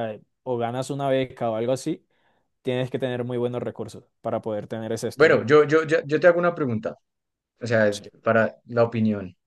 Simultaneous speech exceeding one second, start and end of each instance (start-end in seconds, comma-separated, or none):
none